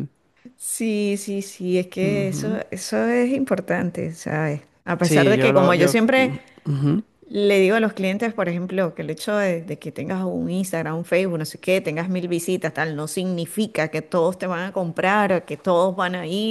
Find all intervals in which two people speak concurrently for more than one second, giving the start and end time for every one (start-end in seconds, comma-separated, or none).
5.0-6.3